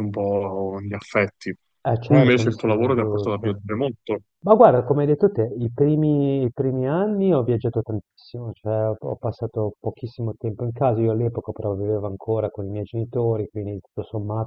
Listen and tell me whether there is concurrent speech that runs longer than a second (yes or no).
yes